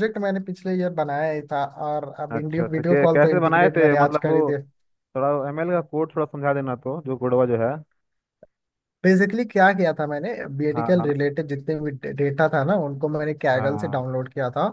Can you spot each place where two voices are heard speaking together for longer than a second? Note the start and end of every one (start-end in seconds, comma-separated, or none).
2.3-4.4